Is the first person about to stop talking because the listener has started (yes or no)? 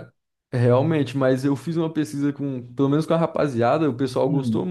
no